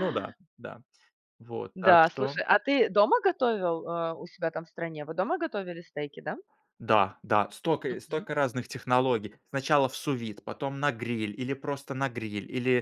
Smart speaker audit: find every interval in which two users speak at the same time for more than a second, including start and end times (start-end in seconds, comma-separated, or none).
none